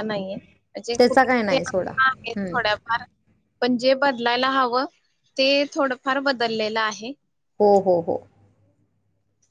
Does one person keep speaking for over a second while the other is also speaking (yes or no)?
yes